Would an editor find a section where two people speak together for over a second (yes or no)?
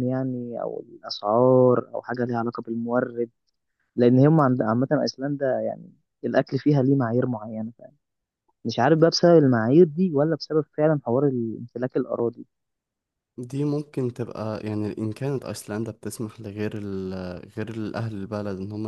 no